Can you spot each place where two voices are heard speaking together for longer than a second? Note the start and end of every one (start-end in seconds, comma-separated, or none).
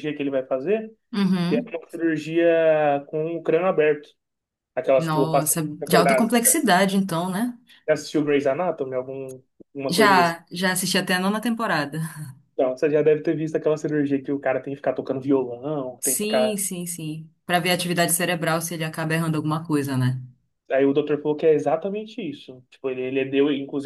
5.0-6.3